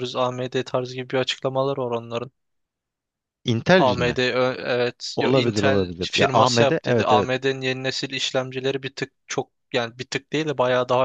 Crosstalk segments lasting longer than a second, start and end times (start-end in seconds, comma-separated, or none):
5.2-7.3